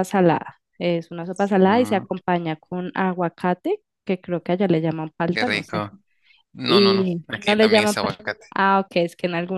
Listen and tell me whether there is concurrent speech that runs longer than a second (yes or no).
yes